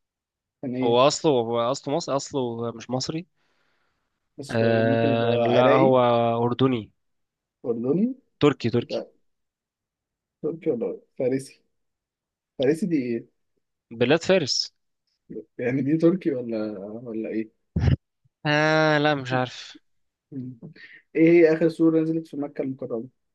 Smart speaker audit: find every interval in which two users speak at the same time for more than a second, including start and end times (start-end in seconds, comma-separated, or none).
4.5-6.0